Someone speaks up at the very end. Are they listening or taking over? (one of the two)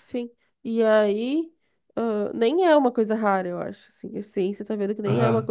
listening